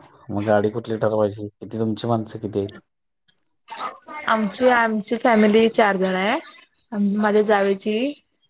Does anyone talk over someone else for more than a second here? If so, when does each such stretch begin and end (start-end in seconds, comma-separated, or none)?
none